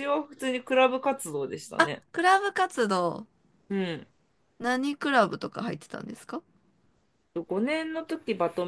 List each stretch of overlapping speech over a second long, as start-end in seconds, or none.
none